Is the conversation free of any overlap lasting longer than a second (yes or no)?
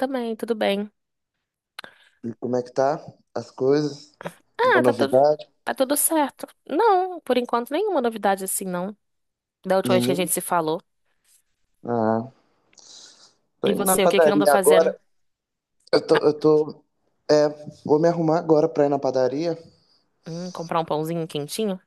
no